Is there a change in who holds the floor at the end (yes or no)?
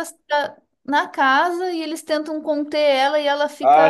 yes